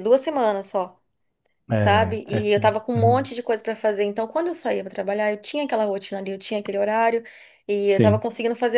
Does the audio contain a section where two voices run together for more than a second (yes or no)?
yes